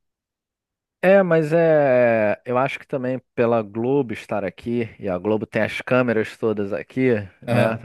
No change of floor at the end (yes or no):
yes